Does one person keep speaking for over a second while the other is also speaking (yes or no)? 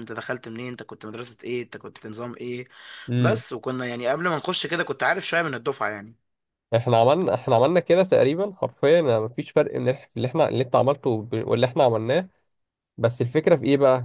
no